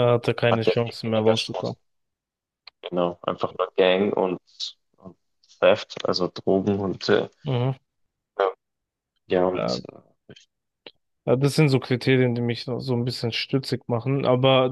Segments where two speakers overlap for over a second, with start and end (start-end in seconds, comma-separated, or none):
0.5-1.8